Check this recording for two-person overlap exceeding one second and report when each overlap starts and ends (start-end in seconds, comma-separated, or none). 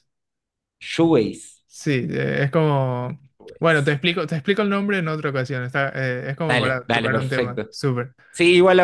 6.5-7.7